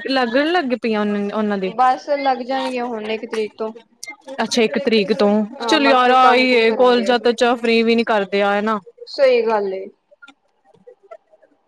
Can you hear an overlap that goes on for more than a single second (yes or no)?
yes